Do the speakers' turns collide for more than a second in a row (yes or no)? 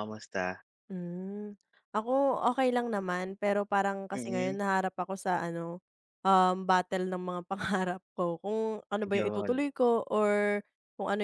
no